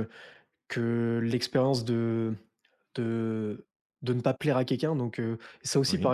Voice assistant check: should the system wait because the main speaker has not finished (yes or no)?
yes